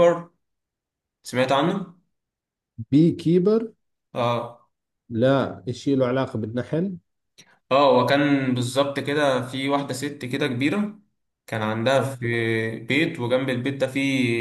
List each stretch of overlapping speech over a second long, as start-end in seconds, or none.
none